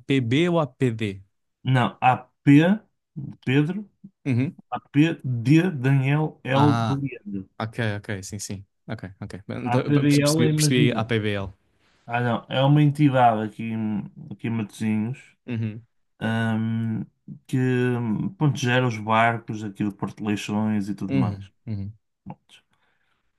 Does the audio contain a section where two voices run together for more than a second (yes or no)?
yes